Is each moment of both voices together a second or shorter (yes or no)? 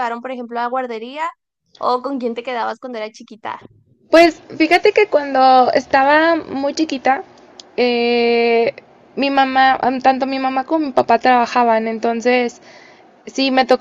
yes